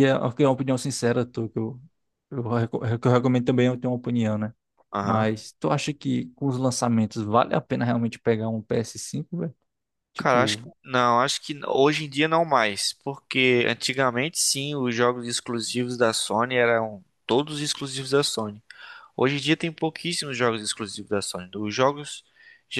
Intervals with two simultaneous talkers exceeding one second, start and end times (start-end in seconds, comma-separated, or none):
none